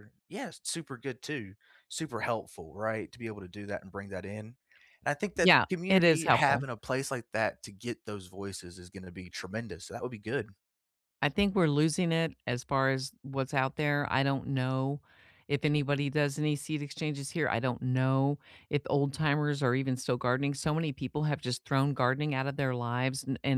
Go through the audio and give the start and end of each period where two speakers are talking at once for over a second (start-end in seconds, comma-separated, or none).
5.4-6.7